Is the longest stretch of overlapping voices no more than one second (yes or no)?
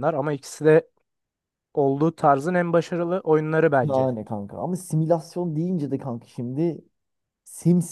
yes